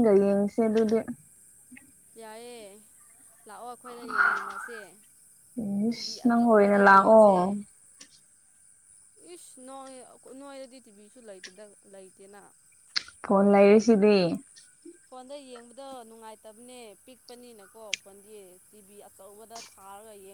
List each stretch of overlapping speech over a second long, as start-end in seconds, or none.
5.9-7.3